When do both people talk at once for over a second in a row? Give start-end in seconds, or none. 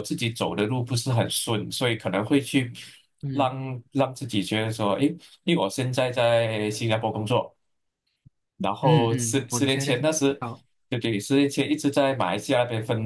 8.8-10.4